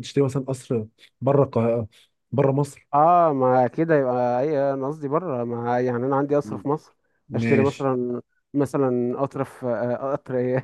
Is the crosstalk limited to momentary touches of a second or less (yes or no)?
yes